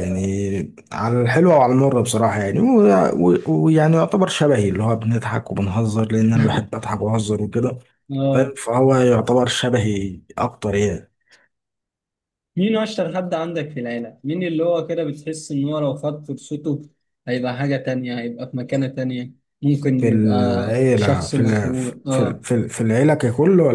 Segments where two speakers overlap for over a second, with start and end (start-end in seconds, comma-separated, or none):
20.0-22.4